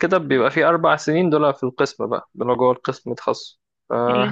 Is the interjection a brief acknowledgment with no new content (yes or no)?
yes